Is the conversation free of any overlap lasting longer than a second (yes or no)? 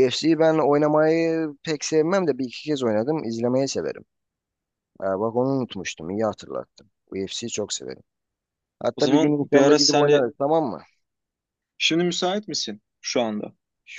no